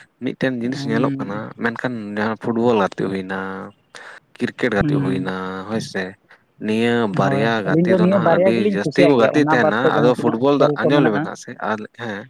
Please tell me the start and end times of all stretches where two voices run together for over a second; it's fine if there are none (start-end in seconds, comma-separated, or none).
7.2-11.2